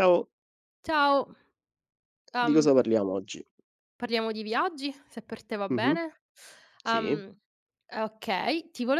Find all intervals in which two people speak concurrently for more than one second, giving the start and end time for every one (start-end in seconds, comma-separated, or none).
none